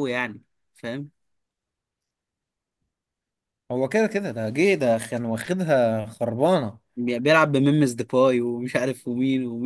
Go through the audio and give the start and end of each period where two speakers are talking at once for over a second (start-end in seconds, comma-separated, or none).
none